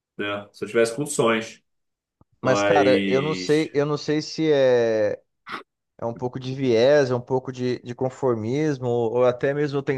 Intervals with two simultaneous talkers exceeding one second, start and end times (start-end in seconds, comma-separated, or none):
2.4-3.7